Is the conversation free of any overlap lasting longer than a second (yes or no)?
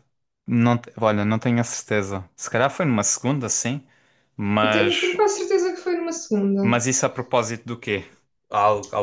yes